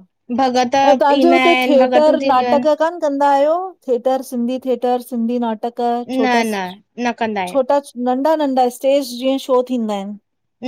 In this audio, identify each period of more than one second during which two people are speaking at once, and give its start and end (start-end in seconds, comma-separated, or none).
1.2-2.7